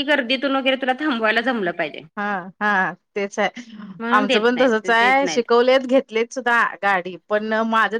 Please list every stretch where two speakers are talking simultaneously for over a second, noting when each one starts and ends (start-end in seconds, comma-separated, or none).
4.2-5.4